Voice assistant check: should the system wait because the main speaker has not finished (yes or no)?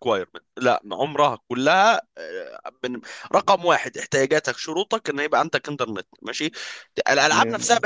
yes